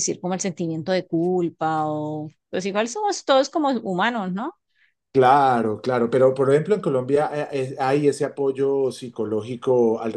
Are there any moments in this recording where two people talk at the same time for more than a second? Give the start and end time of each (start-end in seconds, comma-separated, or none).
none